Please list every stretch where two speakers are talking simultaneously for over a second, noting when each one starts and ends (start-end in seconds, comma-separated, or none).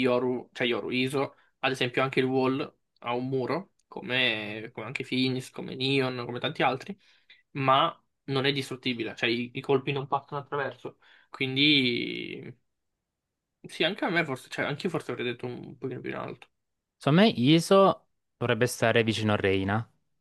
none